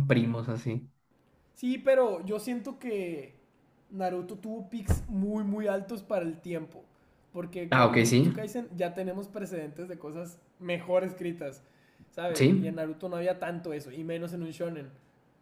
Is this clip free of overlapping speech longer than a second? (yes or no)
yes